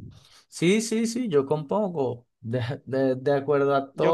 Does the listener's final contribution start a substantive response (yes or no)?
no